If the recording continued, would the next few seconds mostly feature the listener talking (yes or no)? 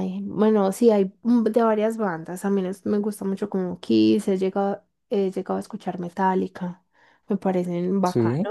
no